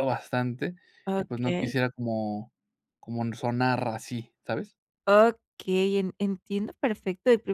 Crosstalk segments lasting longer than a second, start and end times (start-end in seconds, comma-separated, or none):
none